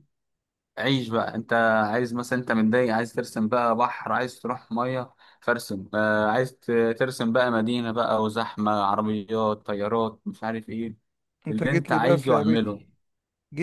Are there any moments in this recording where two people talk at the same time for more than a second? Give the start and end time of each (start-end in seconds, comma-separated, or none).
11.5-12.8